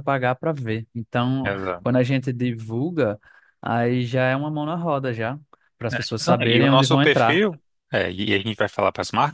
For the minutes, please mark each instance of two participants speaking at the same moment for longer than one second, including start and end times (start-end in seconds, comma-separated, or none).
5.9-7.4